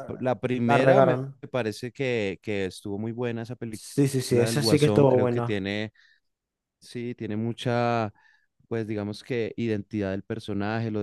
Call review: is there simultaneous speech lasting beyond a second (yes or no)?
yes